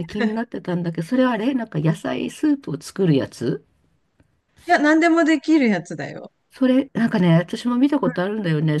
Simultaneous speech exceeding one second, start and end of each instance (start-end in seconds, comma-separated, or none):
none